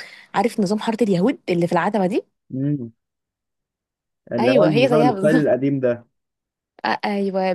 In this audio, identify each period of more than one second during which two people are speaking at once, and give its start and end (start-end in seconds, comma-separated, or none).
4.4-5.6